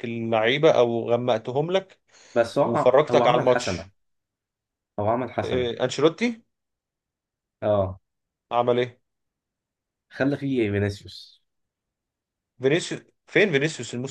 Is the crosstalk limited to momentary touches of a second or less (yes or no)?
no